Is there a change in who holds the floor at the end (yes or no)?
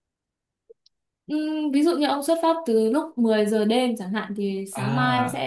no